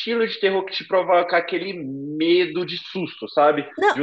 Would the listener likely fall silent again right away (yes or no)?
yes